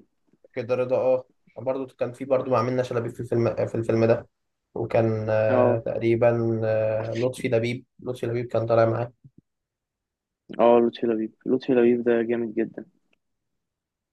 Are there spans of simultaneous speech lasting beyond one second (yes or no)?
no